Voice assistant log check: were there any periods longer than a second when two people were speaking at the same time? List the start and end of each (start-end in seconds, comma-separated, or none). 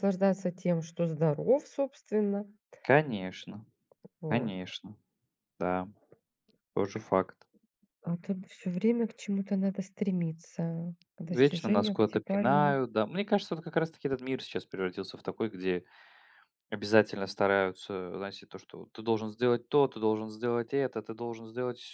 11.2-12.8